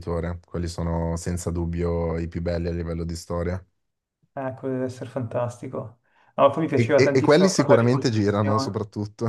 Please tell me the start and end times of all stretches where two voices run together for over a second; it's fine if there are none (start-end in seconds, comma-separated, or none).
6.7-8.8